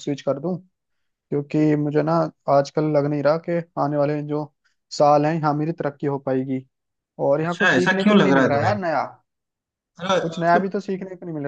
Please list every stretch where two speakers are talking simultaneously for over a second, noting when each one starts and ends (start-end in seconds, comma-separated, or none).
7.4-8.7